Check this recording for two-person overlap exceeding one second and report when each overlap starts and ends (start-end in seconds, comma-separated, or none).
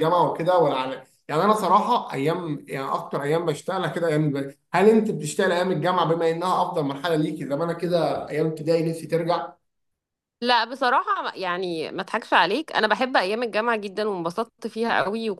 none